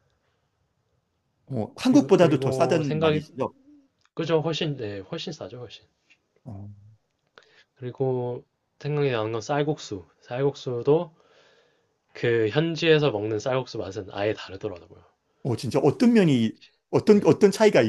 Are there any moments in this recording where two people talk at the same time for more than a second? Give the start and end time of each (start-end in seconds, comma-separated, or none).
1.8-3.2